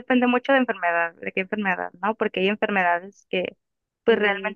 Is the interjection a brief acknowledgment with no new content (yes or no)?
yes